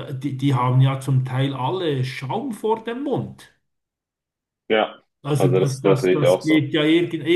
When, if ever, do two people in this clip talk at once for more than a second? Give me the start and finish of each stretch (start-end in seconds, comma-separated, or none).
5.4-6.7